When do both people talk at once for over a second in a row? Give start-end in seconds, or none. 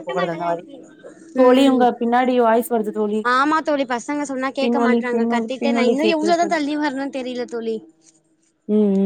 4.6-6.6